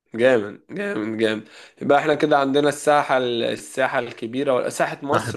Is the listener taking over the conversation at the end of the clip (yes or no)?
no